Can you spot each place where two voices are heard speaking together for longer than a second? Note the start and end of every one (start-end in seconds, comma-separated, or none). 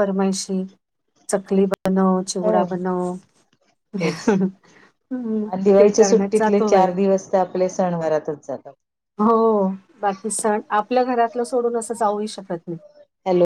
none